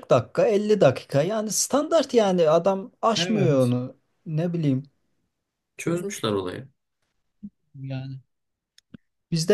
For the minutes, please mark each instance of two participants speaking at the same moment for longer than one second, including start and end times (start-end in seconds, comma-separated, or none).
none